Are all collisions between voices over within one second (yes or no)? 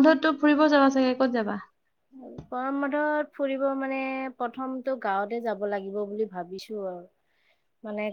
yes